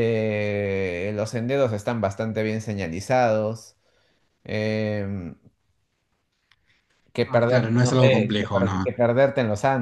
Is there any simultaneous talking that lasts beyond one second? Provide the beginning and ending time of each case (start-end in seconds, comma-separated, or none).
7.2-8.9